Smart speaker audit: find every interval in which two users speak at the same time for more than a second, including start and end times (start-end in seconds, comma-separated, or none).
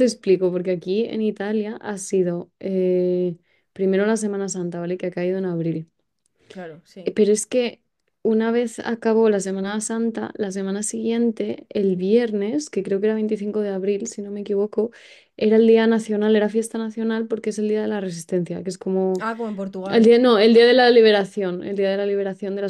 none